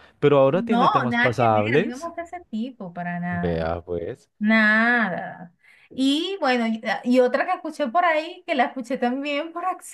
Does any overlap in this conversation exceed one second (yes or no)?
yes